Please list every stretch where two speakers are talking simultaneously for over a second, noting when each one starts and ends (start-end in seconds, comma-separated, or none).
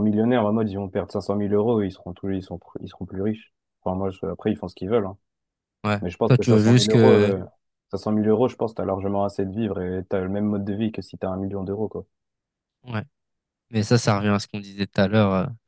6.0-7.3